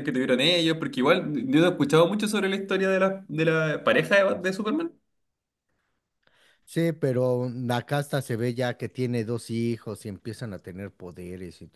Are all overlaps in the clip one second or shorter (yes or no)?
yes